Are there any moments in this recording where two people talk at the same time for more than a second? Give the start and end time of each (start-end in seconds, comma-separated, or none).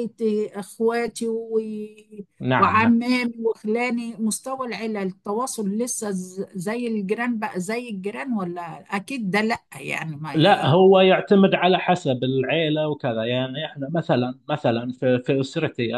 none